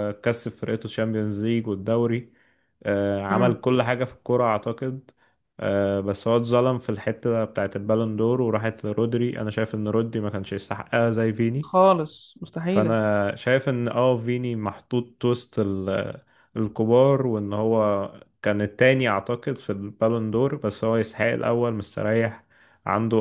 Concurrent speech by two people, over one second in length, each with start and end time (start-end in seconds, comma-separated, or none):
none